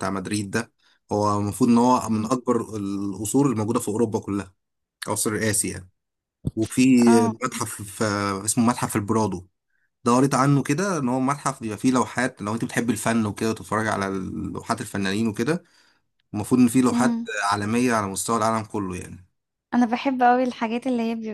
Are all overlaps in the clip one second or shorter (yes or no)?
yes